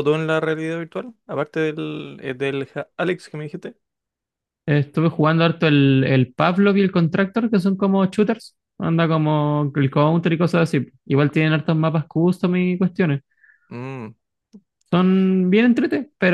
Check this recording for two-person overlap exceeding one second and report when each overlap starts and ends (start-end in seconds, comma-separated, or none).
none